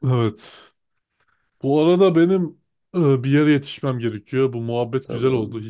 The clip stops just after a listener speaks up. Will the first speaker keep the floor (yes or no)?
yes